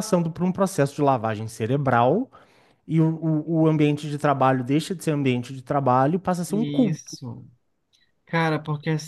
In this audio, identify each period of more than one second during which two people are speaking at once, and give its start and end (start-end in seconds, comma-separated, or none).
none